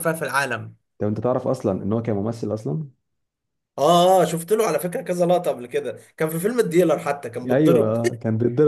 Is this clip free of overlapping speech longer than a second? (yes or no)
yes